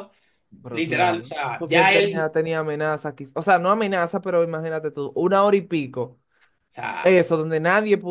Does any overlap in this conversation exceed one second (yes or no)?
yes